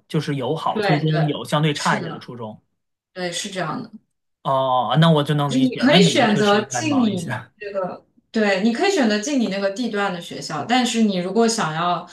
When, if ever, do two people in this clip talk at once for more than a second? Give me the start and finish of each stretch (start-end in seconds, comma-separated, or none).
0.7-2.3, 5.5-7.5